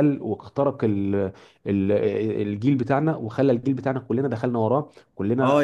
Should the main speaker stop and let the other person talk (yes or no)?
yes